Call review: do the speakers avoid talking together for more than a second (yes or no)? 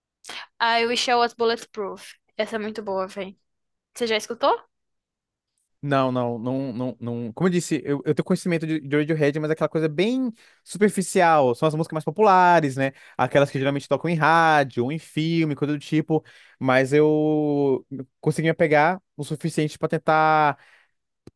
yes